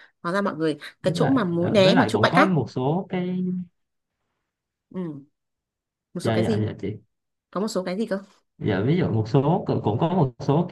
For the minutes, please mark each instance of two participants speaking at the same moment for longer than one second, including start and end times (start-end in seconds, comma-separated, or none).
1.0-2.5